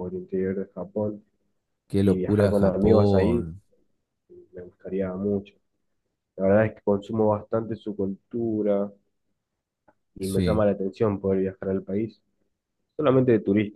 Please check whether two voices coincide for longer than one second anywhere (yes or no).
yes